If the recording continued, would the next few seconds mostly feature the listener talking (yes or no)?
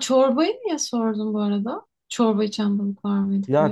yes